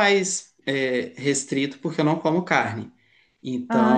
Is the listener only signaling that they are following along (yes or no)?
yes